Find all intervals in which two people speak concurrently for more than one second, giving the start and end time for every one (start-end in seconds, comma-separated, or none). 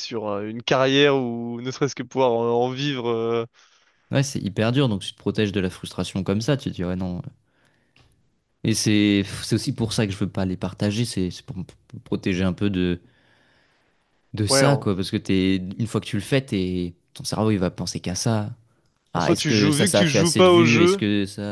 19.1-21.0